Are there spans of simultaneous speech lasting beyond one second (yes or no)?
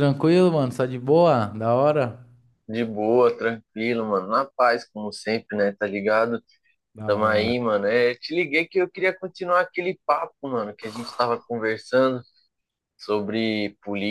no